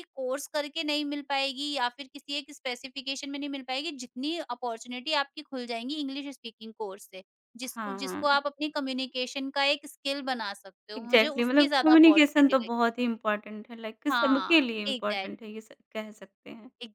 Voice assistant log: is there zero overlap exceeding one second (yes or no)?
no